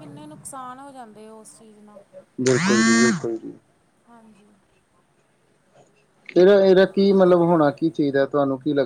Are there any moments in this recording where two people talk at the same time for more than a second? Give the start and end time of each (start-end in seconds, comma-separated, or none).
none